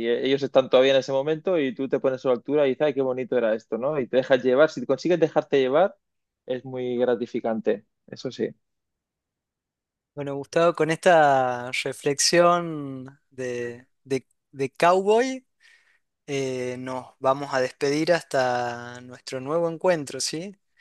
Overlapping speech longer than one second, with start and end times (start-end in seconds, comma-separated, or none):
none